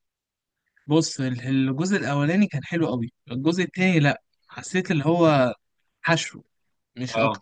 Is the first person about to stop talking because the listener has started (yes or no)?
no